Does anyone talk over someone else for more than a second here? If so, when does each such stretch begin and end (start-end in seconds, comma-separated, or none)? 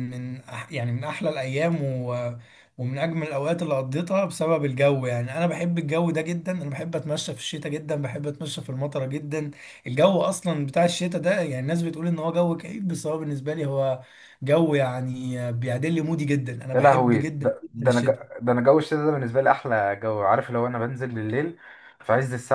16.7-18.2